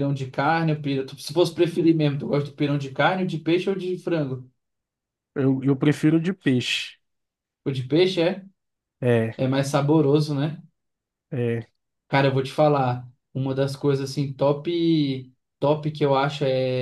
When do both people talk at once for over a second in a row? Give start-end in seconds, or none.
none